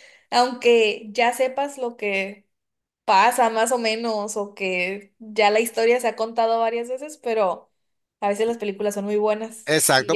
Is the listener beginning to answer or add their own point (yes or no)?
yes